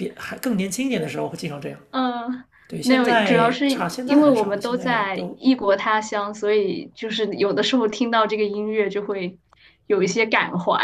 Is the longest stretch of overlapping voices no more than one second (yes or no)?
no